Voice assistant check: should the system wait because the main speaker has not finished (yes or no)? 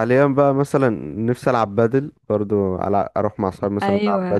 no